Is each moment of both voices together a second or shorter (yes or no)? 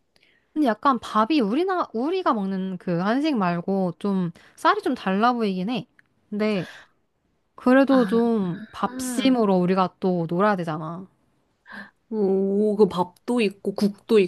yes